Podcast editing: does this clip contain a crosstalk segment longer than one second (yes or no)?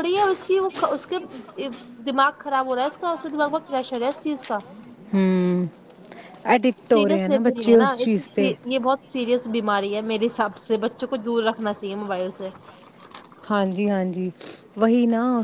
yes